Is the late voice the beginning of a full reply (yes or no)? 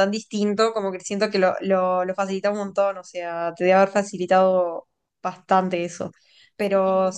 no